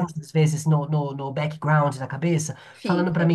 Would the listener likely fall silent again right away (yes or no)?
yes